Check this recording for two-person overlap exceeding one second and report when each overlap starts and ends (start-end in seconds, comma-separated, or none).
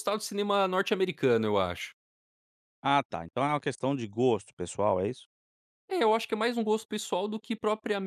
none